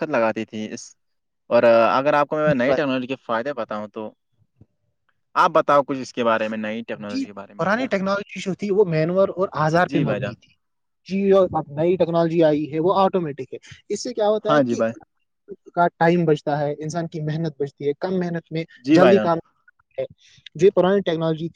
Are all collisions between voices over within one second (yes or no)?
yes